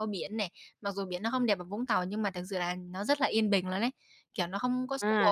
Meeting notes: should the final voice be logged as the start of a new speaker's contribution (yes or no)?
yes